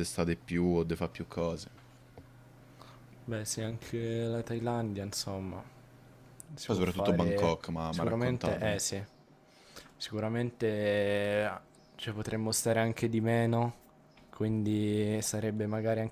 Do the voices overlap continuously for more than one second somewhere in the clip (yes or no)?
yes